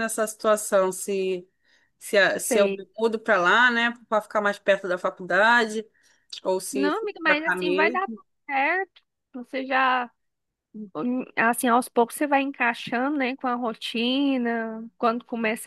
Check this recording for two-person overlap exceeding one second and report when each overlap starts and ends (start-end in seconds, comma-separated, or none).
6.7-8.2